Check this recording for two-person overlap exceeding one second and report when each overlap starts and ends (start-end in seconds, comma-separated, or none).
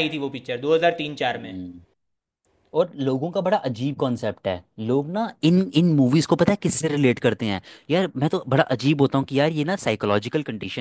none